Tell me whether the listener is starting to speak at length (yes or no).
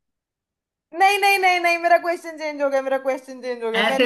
yes